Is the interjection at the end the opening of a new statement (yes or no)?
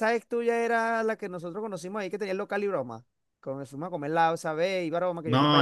yes